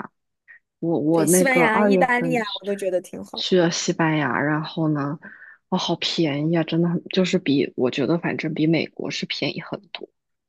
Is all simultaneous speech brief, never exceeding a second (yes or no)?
no